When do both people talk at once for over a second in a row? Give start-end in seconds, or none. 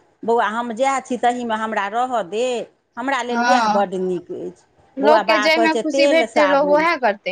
5.0-6.8